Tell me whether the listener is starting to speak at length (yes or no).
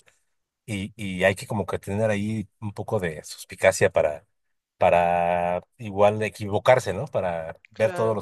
no